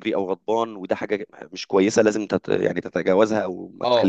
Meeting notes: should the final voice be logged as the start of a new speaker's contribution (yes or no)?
yes